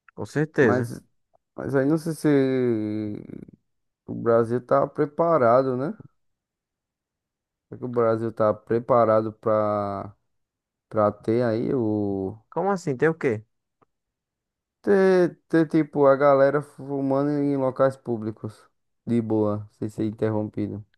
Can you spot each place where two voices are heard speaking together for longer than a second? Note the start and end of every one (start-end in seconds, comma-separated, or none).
none